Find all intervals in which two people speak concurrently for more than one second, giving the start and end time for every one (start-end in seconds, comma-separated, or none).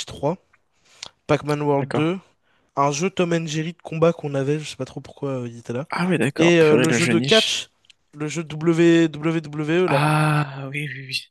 6.4-7.6